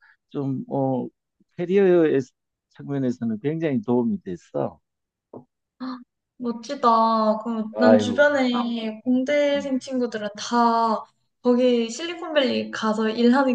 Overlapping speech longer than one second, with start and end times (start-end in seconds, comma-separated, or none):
none